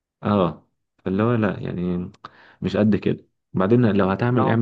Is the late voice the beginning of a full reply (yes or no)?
no